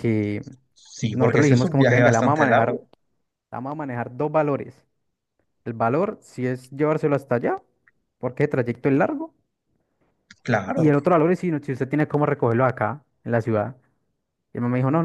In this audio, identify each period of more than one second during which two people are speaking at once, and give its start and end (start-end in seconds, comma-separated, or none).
1.1-2.8